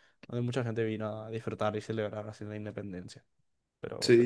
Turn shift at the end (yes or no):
yes